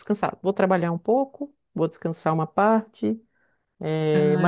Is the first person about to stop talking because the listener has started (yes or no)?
no